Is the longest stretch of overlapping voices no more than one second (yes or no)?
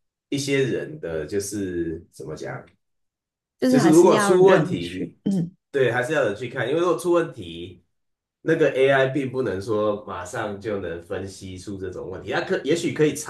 no